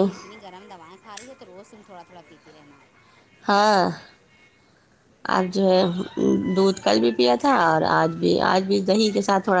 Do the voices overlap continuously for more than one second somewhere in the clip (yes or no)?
no